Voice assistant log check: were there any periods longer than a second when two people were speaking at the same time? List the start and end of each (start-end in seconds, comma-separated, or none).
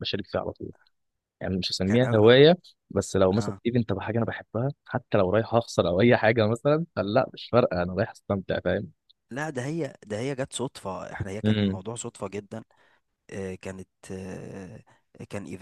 none